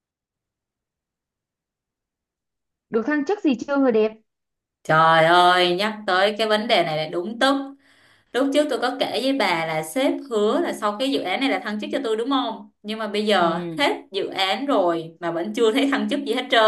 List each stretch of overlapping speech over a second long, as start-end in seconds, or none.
none